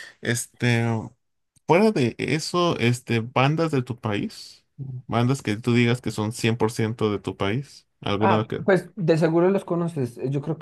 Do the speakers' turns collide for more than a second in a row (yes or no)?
no